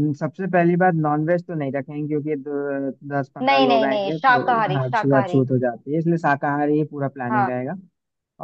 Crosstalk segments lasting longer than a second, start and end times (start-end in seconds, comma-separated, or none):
3.5-5.4